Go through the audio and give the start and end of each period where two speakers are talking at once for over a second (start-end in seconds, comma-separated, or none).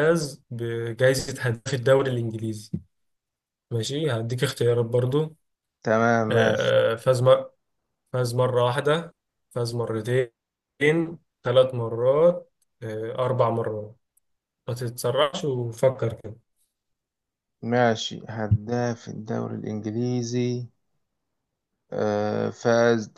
none